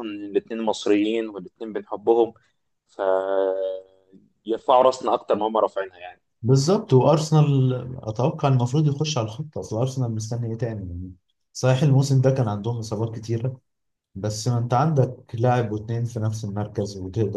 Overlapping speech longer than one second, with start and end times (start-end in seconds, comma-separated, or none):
none